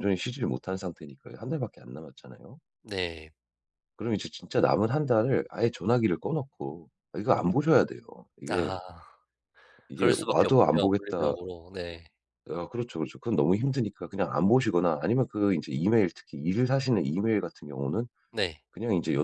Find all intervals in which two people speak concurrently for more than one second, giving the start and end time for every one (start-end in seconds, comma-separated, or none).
10.0-11.3